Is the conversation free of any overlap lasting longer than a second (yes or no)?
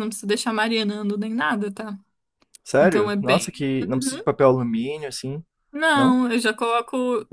no